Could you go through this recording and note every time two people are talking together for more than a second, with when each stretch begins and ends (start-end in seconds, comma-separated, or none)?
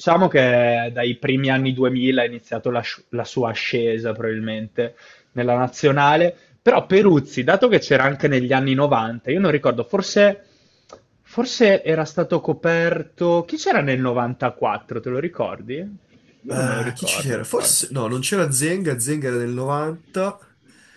16.5-17.9